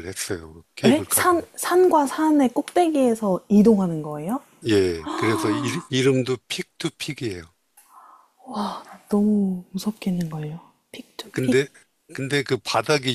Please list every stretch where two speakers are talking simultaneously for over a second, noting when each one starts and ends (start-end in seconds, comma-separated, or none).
none